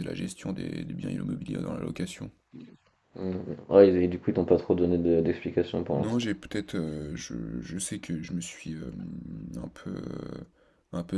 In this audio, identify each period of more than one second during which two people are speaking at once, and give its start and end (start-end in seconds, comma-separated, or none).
none